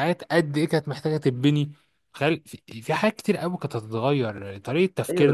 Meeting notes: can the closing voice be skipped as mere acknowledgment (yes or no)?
no